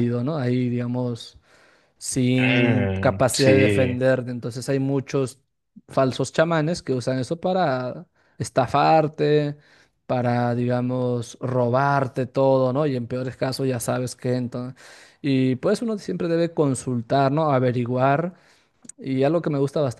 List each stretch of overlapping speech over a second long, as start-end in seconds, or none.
2.4-4.0